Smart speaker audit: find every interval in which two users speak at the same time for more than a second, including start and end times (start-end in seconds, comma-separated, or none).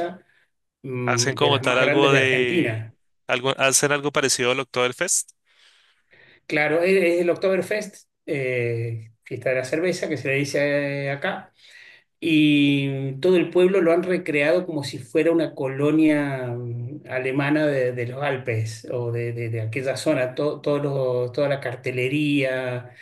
1.0-2.9